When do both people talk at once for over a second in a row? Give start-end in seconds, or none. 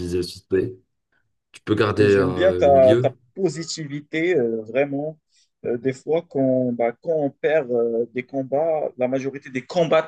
1.9-3.2